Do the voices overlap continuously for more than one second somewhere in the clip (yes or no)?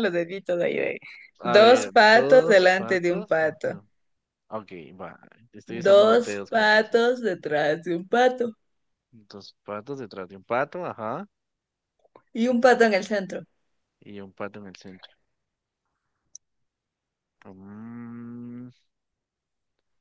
yes